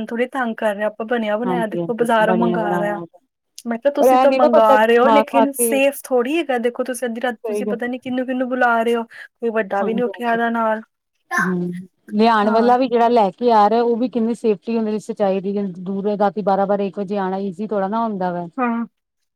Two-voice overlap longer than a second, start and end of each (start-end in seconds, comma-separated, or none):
1.4-3.0, 4.0-5.7